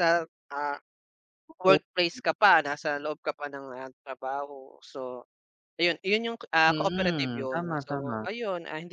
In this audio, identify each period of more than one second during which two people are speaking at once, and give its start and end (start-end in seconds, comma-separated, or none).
6.7-8.3